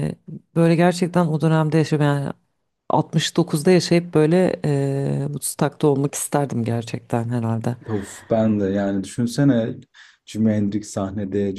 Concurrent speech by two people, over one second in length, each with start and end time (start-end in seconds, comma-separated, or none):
none